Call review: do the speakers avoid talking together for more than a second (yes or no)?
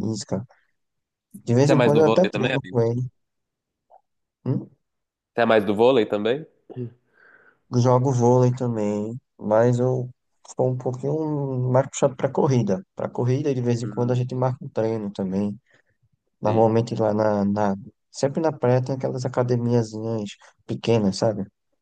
no